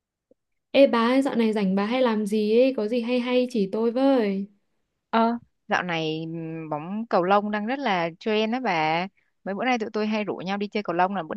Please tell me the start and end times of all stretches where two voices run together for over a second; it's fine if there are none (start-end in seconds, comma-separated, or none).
none